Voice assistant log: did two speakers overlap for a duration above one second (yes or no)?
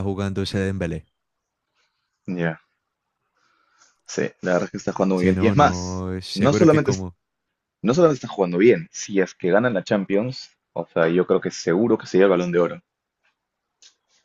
yes